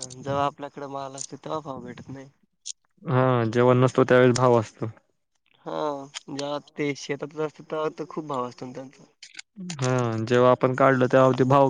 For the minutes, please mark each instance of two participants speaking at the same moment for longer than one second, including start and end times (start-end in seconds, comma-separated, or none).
none